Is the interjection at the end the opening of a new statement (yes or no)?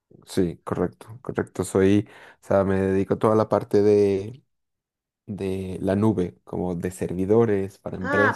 yes